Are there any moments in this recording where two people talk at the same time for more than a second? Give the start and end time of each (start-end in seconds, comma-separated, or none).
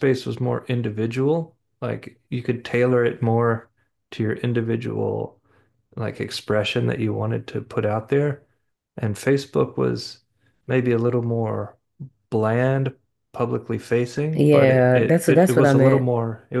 14.3-16.1